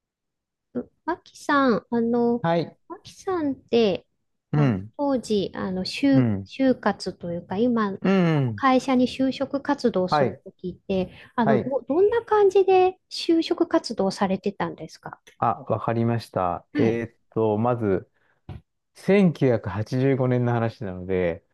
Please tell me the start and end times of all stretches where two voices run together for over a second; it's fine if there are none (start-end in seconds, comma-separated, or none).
none